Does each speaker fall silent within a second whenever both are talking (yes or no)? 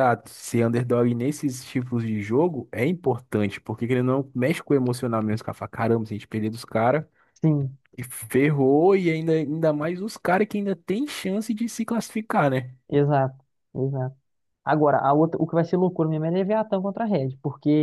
yes